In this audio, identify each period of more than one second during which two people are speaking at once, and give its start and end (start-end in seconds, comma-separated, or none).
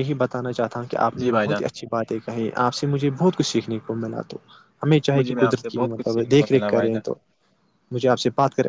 5.2-7.0